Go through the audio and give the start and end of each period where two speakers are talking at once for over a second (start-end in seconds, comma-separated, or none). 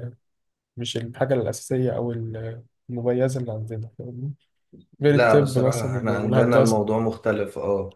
5.0-6.8